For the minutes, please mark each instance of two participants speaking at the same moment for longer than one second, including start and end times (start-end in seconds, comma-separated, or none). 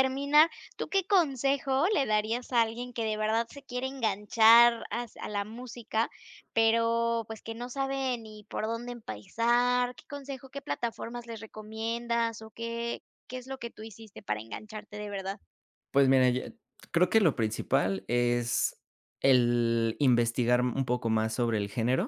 none